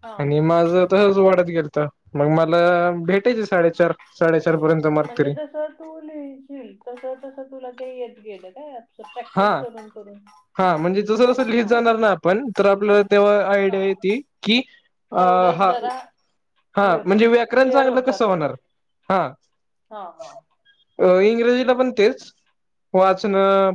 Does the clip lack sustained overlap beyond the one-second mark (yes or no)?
no